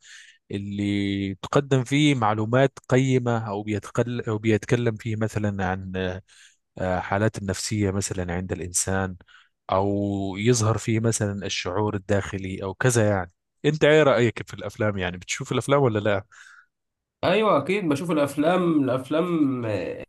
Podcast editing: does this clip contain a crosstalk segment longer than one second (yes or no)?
no